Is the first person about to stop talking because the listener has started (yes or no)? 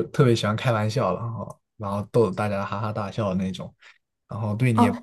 yes